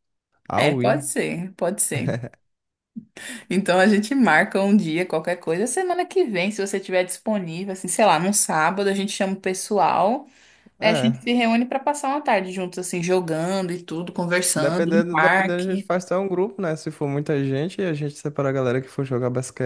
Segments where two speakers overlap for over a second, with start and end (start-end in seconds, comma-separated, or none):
14.6-15.9